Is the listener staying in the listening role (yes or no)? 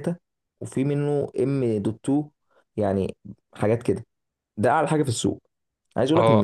yes